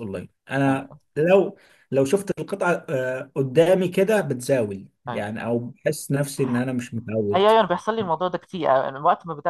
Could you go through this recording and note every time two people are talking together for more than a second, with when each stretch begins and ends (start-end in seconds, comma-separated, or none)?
none